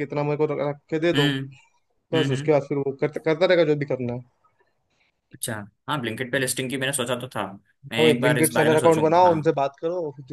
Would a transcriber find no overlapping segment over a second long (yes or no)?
no